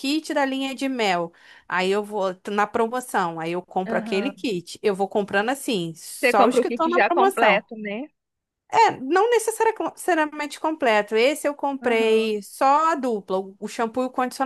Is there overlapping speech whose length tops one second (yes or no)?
yes